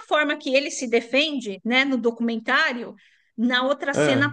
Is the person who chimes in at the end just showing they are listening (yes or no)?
yes